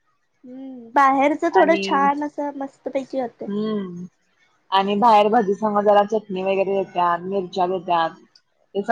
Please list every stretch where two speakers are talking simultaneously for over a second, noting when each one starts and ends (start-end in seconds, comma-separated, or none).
none